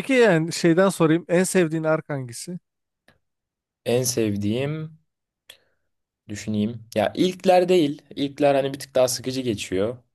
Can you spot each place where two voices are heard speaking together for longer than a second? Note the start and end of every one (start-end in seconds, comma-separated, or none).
none